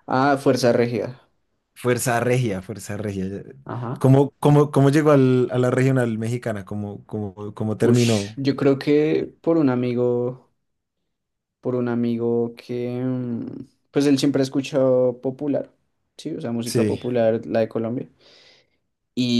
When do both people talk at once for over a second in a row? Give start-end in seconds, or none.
none